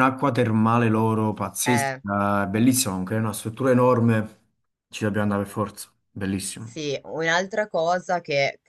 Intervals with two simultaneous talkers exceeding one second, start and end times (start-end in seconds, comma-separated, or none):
none